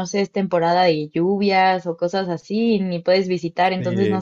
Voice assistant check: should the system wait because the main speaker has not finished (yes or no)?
no